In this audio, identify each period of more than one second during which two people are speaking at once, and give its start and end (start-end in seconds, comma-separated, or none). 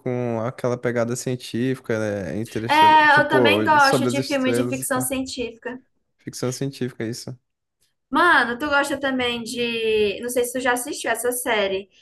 2.7-5.1